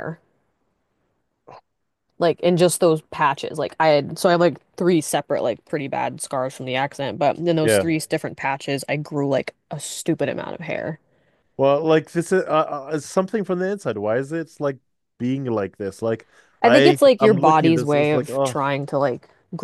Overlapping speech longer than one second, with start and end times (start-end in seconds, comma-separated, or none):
16.6-18.6